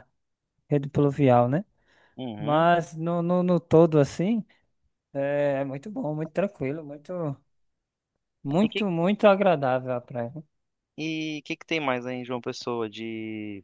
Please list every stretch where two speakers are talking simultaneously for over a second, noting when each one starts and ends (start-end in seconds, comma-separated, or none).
none